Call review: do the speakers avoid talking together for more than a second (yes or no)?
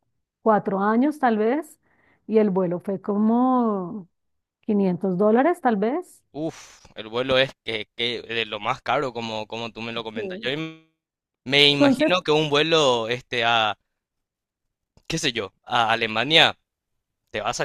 yes